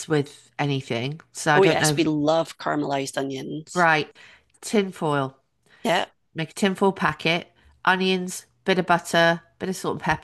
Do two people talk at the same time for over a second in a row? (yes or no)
no